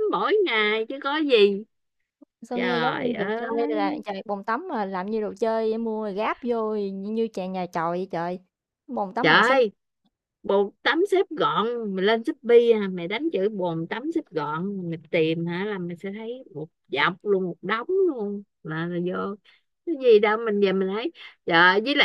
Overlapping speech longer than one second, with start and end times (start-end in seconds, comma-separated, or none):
2.5-4.0